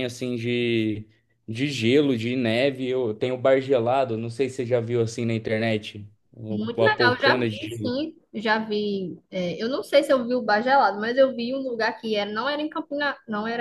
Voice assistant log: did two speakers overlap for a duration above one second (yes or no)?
yes